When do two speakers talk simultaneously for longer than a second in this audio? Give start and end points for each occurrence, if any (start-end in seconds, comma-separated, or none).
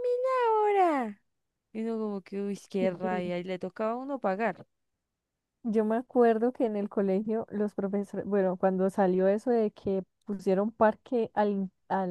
none